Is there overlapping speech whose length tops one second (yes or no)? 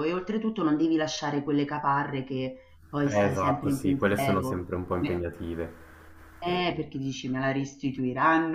yes